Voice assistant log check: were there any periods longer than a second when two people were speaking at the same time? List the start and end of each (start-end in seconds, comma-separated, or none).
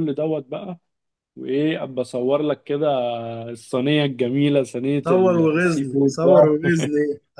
5.0-6.7